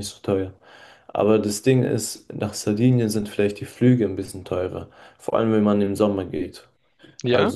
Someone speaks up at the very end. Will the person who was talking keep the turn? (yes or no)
yes